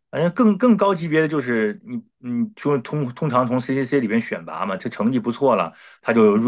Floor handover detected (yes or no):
no